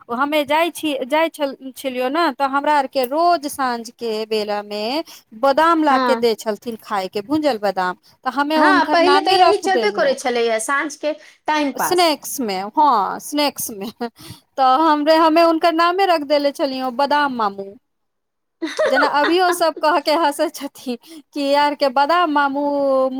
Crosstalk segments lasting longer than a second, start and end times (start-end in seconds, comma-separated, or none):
8.6-10.1